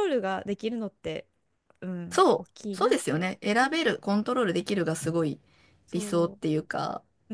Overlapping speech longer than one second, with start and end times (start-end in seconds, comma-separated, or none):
2.1-3.9